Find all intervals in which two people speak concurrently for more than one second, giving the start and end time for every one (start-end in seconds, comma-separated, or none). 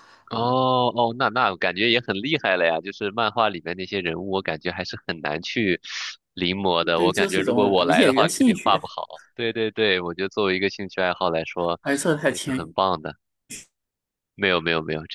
7.0-8.8